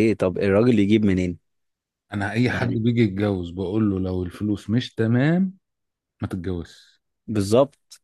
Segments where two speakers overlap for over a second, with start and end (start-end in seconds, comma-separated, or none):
none